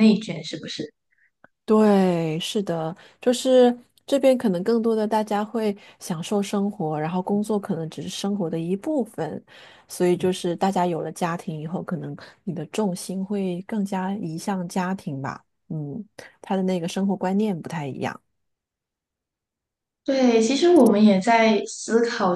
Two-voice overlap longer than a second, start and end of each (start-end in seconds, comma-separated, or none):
none